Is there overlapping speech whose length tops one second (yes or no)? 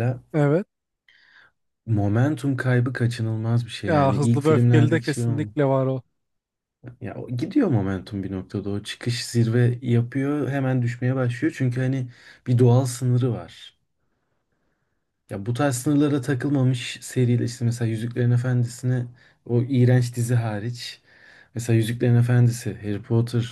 yes